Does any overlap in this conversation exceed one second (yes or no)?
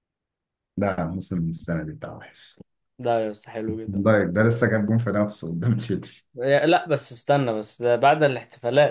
no